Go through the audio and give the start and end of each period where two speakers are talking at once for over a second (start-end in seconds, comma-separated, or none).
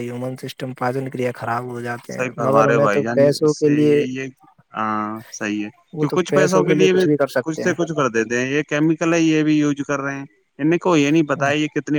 none